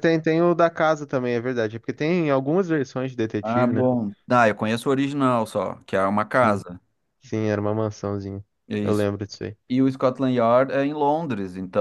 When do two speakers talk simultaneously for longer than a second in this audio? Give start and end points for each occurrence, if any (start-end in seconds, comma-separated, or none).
none